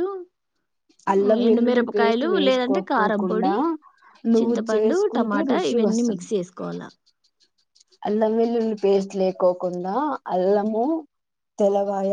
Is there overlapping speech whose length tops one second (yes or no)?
yes